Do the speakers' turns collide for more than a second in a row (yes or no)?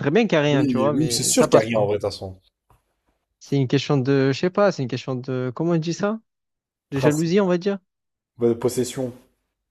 yes